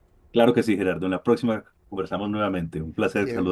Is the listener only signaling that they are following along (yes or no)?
no